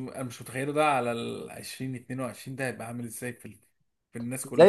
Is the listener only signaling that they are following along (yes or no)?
no